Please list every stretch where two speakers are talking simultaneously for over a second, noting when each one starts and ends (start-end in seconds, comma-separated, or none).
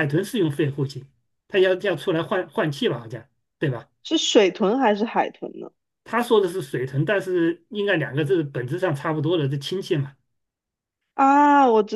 none